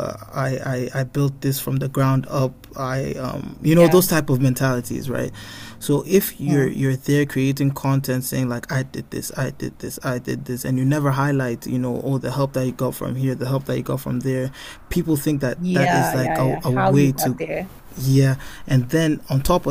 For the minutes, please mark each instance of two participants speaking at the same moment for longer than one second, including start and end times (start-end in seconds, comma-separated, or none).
15.6-17.4